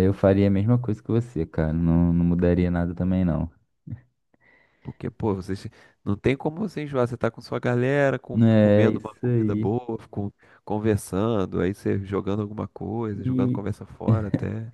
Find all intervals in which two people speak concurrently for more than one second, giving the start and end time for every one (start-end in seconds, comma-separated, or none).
8.3-9.7